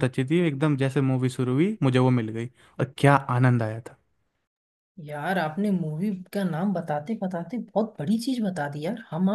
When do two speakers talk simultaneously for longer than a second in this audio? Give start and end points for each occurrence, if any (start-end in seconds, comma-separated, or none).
none